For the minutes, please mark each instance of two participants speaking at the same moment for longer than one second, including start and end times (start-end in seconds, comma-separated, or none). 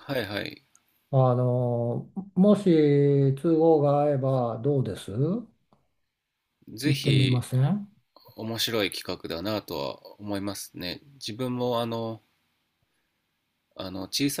none